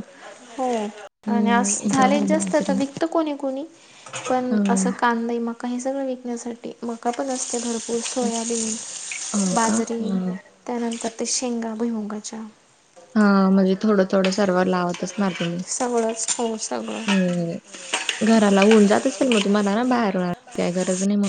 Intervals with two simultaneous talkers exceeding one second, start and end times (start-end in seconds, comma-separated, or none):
1.3-2.8